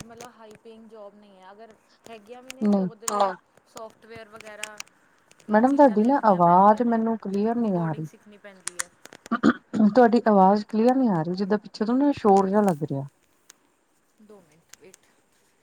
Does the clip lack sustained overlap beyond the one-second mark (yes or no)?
no